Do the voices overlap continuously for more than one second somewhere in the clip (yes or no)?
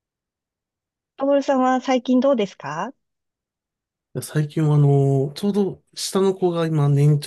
no